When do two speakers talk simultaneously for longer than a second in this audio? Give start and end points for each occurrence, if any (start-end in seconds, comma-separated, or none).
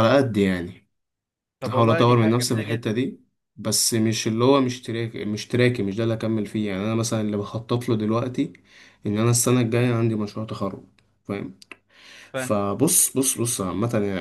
1.7-3.0